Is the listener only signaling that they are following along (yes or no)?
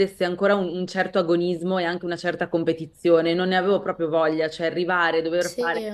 yes